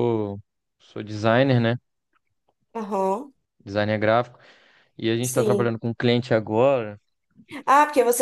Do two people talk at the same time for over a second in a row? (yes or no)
no